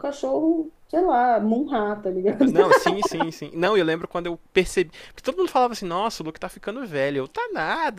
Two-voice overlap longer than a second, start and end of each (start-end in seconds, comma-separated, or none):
none